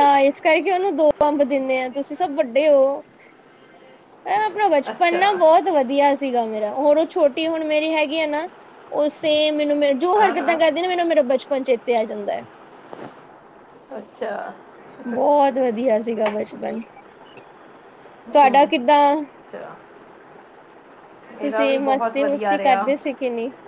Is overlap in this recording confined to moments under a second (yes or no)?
no